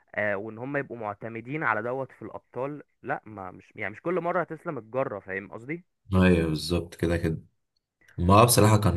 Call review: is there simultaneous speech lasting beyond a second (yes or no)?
no